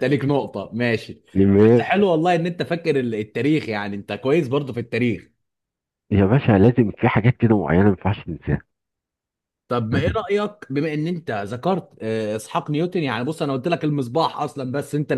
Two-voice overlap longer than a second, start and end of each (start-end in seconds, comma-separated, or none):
none